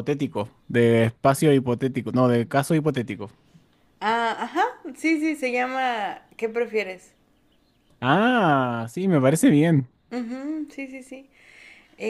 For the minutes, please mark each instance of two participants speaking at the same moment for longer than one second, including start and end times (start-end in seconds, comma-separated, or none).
none